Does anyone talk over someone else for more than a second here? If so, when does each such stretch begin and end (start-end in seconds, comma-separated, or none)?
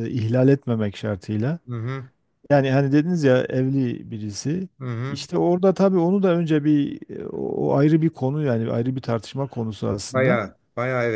none